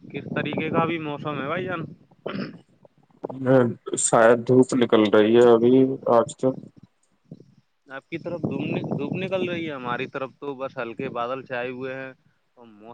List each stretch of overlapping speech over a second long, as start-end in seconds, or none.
none